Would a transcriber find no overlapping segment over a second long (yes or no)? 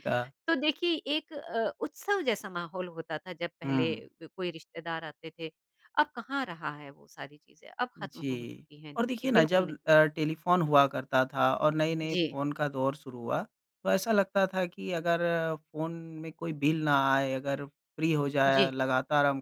no